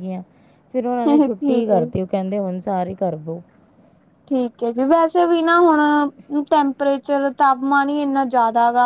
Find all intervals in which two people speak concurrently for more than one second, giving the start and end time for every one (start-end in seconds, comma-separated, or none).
none